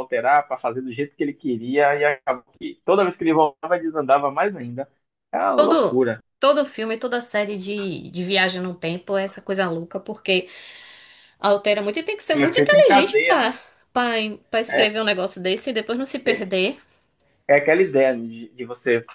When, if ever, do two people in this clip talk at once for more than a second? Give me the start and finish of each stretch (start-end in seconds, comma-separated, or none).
12.3-13.5